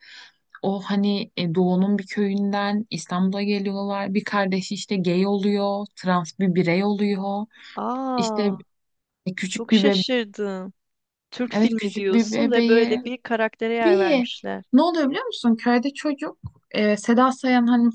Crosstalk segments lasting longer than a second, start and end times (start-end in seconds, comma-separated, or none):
11.5-13.0